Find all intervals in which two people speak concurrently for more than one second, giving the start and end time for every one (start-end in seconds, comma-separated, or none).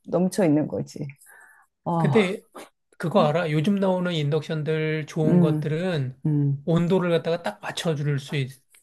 none